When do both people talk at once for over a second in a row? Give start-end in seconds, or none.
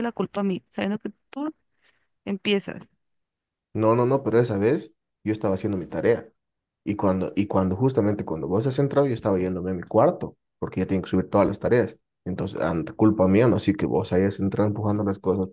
none